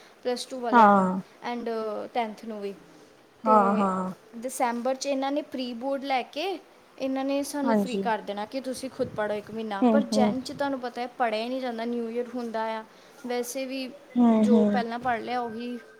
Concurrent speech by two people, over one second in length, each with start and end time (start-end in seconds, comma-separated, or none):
none